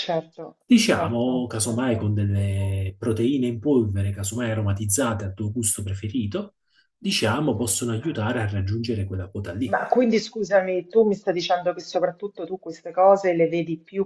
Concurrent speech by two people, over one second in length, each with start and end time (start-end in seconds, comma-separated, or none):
0.7-2.1